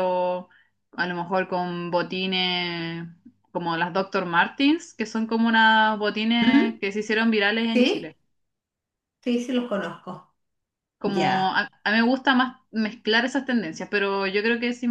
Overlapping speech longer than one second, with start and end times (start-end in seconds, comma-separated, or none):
none